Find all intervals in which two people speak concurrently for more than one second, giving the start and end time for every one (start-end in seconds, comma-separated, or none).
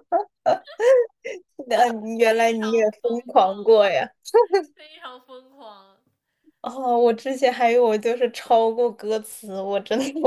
2.2-3.6